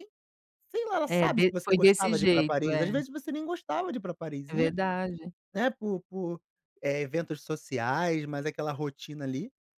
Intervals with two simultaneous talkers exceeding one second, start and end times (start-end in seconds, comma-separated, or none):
1.1-2.9